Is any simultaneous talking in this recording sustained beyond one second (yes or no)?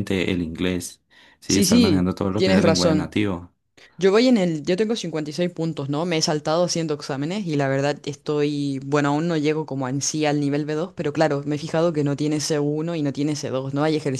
yes